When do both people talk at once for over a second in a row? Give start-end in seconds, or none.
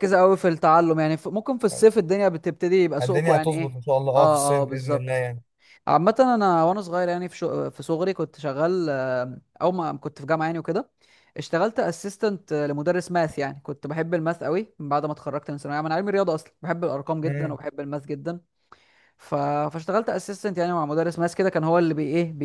3.0-5.2